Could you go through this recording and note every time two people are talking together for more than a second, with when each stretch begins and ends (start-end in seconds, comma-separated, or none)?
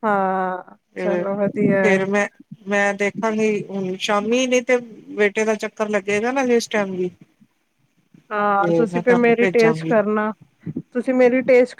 8.6-10.0